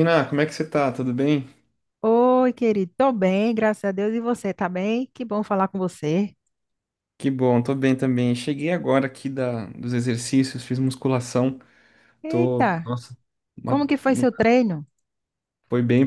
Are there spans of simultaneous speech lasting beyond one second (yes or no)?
no